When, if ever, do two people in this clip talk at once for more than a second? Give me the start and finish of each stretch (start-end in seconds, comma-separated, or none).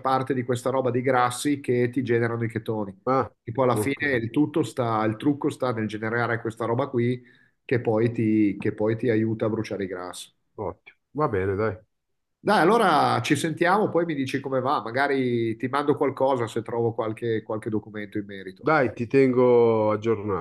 none